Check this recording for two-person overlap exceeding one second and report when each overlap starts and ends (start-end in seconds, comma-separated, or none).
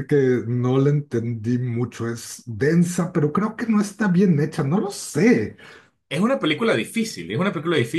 none